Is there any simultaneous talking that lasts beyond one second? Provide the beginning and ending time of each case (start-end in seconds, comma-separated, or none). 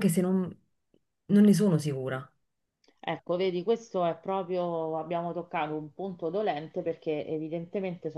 none